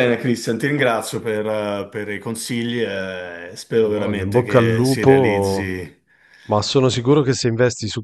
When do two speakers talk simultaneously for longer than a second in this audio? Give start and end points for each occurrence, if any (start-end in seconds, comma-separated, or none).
3.8-5.7